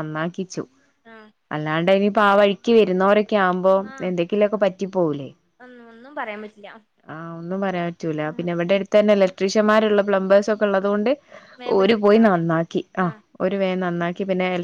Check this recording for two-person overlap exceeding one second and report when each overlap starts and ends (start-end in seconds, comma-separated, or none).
none